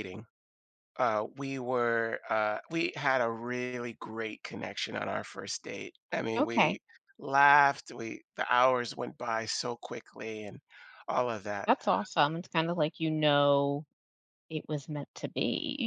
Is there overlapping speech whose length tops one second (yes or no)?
no